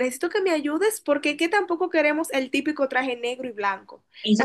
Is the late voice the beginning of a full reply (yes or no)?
yes